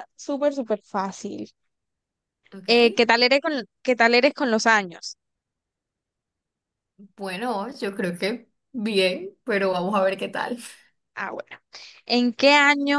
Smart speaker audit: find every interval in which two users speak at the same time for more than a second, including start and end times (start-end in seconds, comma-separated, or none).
none